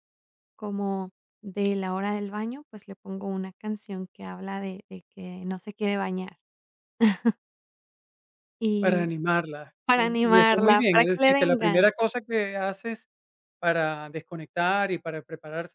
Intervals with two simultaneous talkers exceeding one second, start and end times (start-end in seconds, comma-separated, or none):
9.9-11.9